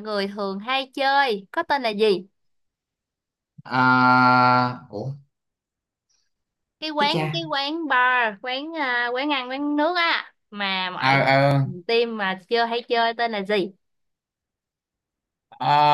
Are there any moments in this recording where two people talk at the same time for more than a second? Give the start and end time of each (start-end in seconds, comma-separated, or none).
none